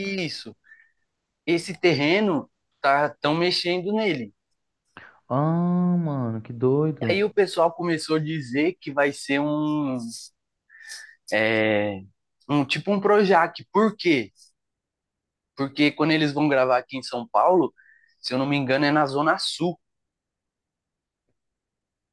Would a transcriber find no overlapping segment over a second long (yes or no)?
yes